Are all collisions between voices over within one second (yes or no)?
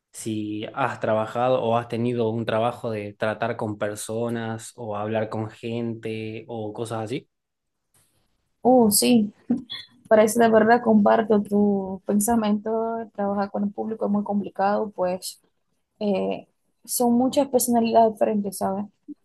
yes